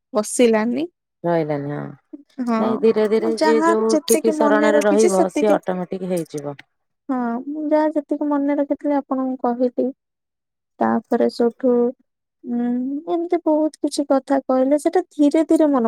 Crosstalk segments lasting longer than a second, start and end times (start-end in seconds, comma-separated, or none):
3.2-5.5